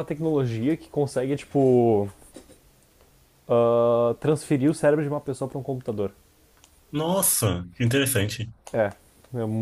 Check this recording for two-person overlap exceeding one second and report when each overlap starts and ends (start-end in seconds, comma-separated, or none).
none